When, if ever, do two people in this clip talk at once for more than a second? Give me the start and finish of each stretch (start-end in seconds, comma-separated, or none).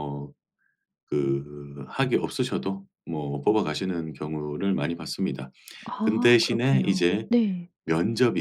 6.0-7.3